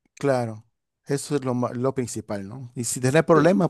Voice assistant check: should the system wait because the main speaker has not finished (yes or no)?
yes